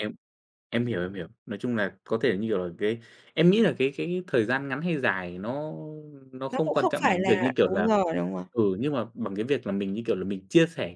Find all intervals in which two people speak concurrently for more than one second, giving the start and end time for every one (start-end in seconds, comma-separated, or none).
6.5-7.9